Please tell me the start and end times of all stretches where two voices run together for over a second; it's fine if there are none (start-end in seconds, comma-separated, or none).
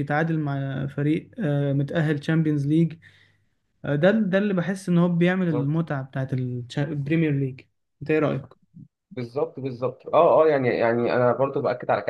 none